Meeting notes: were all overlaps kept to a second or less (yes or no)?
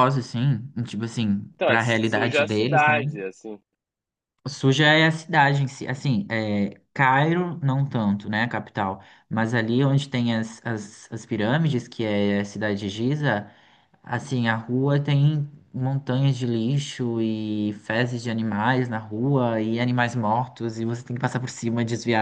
no